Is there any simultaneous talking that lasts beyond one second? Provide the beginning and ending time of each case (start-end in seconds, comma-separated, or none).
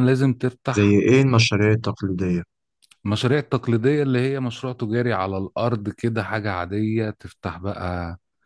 none